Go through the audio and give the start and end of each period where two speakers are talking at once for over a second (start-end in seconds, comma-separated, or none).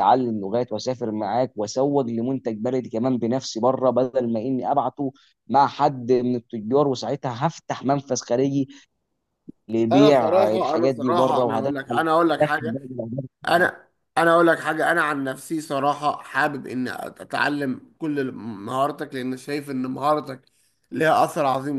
9.9-11.7